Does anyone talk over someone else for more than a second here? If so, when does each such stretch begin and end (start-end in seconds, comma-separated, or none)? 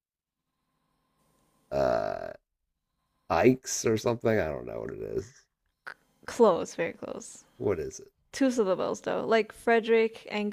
none